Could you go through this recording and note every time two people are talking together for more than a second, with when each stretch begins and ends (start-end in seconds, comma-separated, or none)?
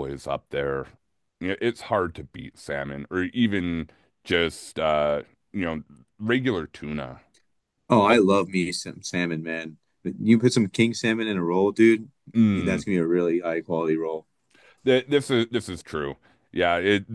none